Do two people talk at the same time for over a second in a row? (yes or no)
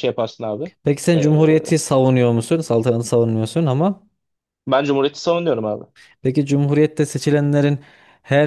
no